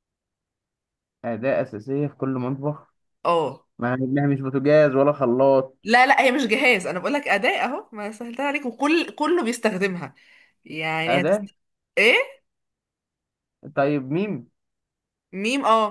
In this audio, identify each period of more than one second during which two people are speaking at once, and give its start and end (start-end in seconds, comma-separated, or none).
none